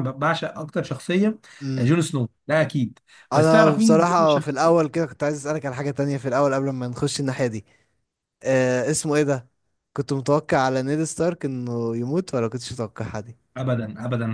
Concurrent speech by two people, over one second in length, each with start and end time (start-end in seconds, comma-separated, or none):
3.3-4.7